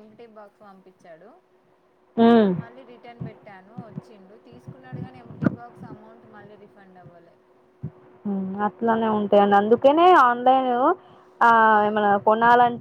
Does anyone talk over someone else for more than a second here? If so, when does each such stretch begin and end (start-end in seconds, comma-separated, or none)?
none